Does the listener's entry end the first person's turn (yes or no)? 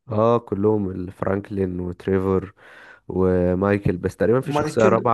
no